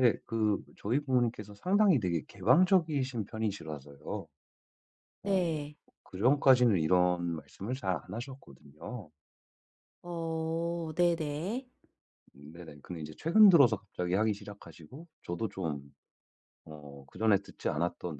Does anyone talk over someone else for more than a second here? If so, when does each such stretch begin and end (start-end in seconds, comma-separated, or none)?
none